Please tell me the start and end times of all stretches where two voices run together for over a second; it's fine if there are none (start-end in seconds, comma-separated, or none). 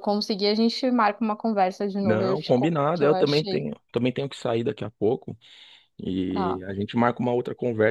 2.0-3.7